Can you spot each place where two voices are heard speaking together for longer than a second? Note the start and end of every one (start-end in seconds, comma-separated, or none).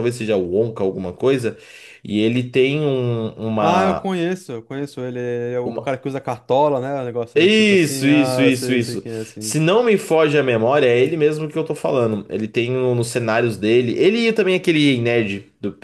7.3-9.6